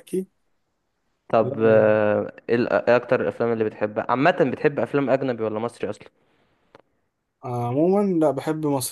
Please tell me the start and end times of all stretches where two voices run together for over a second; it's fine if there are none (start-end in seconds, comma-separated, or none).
none